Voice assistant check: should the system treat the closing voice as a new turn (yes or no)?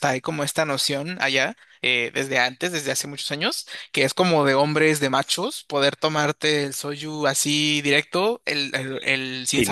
no